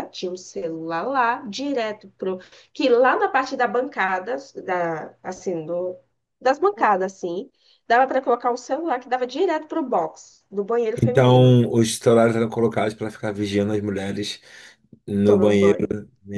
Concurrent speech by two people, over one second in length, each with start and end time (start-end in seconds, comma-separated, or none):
none